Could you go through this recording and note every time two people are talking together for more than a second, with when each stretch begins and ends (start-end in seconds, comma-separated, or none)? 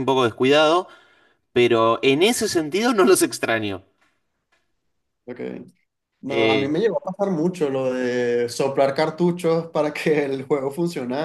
none